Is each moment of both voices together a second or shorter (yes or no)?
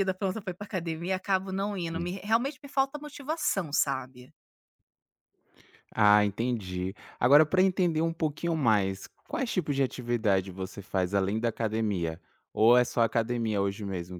yes